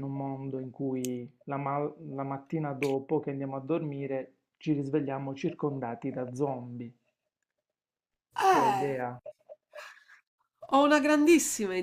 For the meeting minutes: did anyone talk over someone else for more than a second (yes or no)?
no